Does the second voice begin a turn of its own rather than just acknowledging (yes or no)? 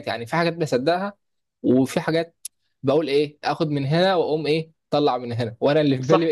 no